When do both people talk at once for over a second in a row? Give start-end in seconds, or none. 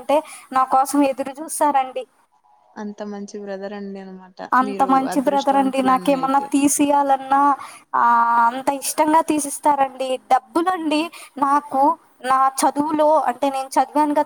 4.7-6.5